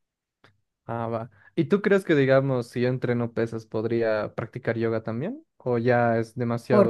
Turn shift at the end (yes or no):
yes